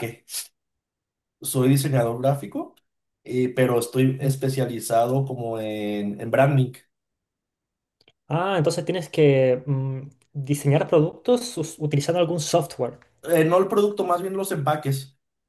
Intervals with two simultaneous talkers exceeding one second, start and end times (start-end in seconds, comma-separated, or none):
none